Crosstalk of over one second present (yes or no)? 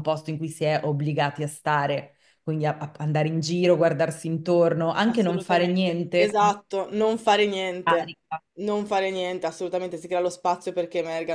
yes